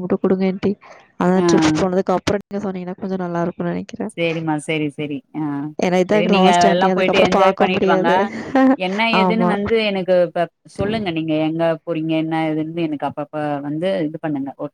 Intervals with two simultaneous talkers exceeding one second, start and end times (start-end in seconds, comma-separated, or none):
6.1-8.1